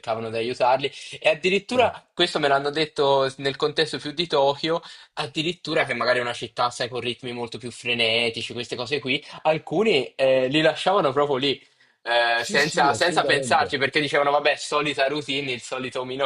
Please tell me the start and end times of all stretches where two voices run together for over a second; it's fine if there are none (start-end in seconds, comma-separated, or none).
12.3-13.7